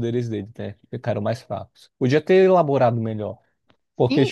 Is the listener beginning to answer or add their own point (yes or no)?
yes